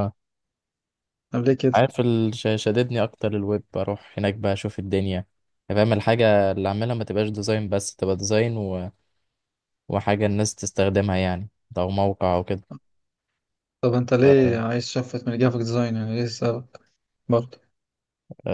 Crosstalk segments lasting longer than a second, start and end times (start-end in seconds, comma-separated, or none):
none